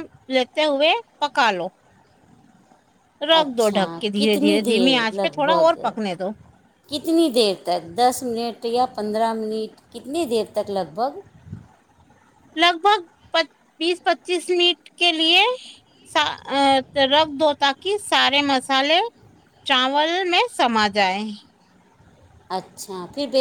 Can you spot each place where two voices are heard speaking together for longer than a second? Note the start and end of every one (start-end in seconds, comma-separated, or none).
3.4-5.7